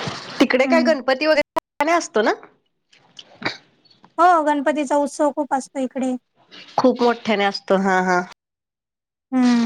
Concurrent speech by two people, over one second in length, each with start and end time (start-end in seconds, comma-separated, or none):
none